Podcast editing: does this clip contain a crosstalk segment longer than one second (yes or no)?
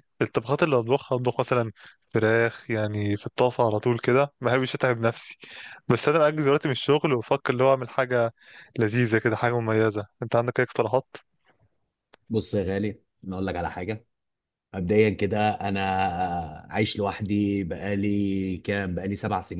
no